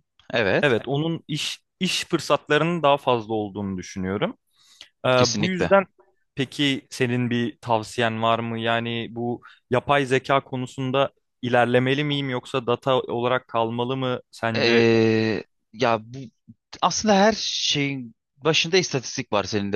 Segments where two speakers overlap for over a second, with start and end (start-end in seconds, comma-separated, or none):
none